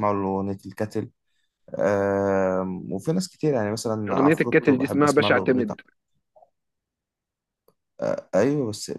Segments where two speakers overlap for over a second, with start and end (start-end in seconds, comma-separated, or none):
4.1-5.8